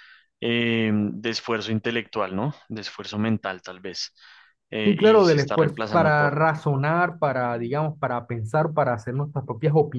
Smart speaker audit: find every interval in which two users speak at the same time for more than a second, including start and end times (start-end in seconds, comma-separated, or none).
4.8-6.4